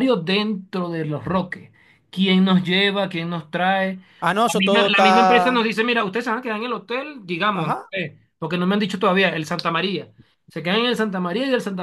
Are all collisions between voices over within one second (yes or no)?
no